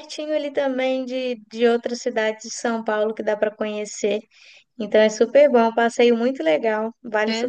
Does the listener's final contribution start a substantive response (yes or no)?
yes